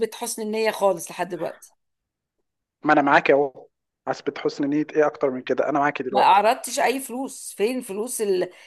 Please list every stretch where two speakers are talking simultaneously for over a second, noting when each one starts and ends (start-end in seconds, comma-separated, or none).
none